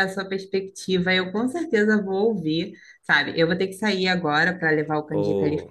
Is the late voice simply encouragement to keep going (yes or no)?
yes